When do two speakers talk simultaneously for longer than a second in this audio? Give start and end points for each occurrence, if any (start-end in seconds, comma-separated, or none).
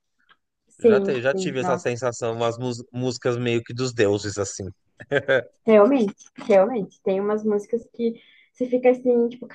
0.8-2.0